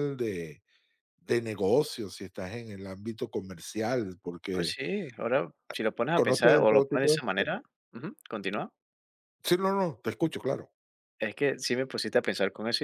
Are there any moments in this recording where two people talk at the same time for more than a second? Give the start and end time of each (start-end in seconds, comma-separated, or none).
6.1-7.6